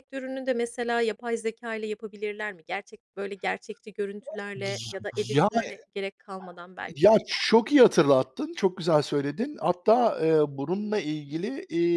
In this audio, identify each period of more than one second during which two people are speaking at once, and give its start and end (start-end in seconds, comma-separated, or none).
none